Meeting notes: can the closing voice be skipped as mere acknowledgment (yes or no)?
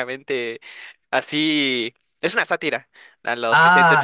no